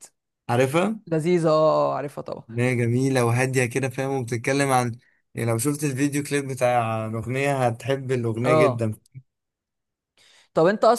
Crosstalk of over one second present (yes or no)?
no